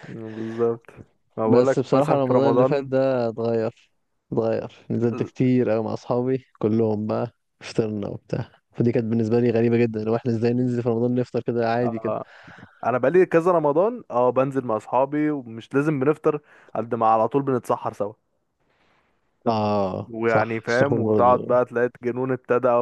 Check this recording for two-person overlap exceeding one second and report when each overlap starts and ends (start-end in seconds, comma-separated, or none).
1.4-2.9, 20.1-21.6